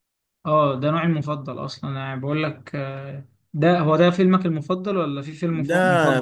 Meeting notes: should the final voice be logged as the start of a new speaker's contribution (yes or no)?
yes